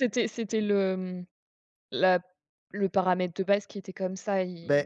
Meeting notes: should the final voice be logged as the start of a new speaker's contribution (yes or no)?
no